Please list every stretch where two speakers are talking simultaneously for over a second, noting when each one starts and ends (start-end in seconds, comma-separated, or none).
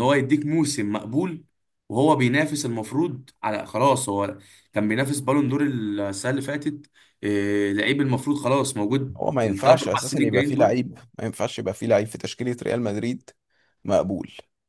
9.2-10.8